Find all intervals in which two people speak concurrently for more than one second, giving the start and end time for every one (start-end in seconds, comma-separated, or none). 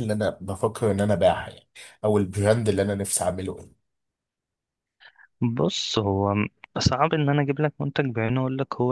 none